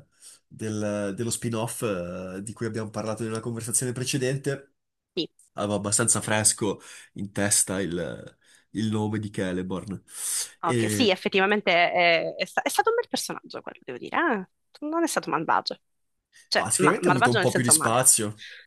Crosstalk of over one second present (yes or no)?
yes